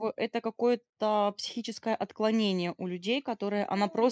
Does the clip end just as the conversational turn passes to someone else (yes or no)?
no